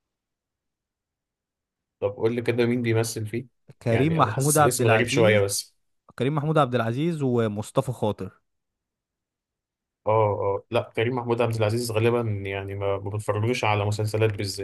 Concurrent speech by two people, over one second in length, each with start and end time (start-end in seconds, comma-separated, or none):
3.9-5.5